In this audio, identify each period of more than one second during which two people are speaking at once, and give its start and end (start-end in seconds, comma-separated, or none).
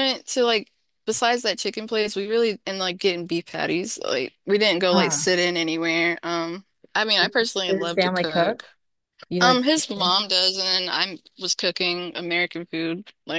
7.2-8.6